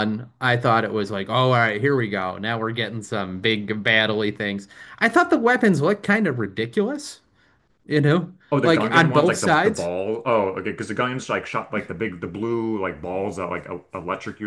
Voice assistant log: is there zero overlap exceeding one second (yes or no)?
no